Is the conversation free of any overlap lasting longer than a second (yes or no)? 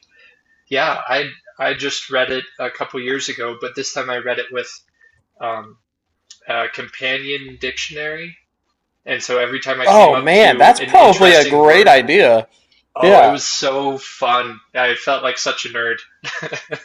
no